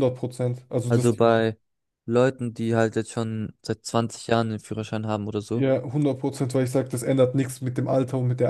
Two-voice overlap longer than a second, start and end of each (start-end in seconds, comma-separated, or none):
none